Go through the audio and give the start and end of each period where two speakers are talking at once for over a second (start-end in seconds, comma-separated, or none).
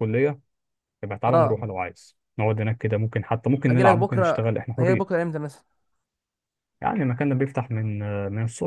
3.7-5.2